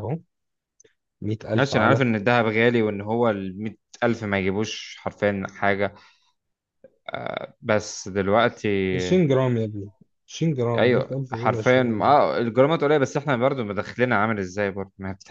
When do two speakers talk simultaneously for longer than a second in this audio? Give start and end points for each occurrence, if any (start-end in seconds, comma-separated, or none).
10.8-12.1